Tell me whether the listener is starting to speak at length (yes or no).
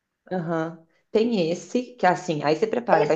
yes